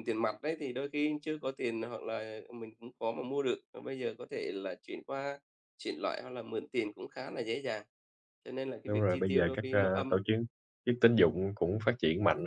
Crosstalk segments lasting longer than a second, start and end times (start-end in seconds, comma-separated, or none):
8.9-10.2